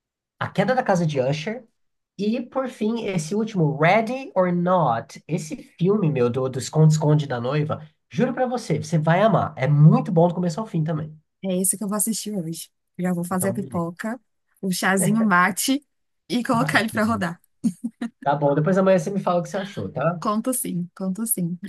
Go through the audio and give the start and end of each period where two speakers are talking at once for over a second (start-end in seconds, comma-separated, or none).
none